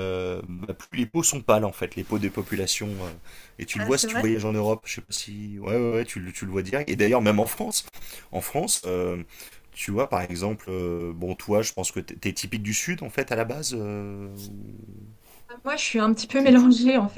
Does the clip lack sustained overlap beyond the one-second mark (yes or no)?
yes